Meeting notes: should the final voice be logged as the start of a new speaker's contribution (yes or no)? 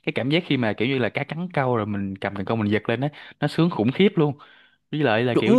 no